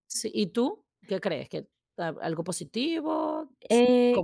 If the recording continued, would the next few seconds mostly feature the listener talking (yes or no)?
yes